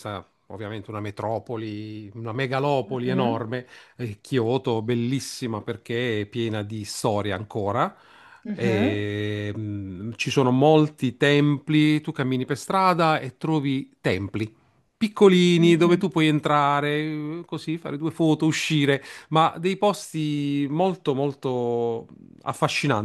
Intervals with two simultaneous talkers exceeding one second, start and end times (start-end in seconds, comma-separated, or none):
none